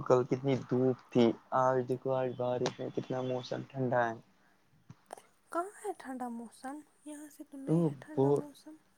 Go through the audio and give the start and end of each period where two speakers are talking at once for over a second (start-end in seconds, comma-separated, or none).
none